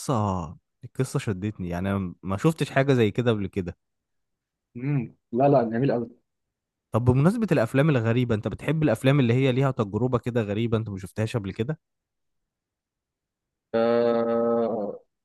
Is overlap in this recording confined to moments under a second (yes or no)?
yes